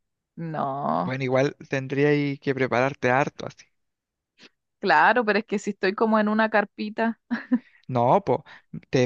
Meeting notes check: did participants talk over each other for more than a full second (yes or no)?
no